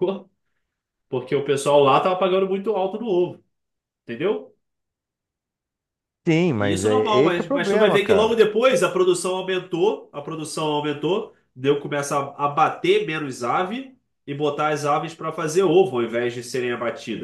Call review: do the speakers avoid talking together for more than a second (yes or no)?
no